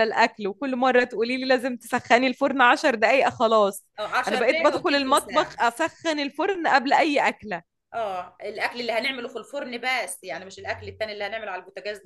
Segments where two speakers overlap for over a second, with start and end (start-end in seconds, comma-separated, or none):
4.3-5.7